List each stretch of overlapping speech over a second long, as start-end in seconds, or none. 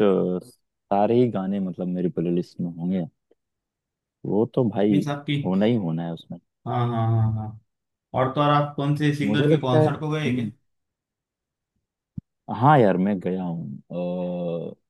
9.2-10.5